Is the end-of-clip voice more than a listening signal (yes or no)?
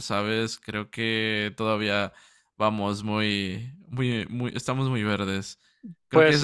yes